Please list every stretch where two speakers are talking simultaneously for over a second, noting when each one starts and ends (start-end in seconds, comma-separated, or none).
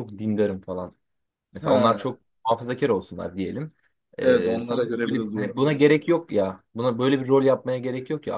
4.2-5.9